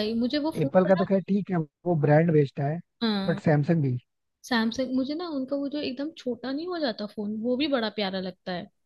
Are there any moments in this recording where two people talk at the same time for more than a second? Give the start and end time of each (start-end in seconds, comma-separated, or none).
none